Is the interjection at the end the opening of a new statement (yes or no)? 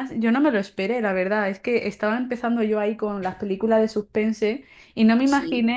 no